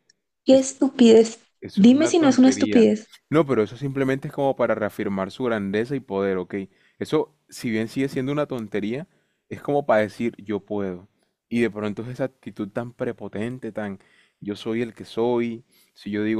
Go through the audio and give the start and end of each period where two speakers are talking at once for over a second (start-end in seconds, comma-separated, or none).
1.6-2.9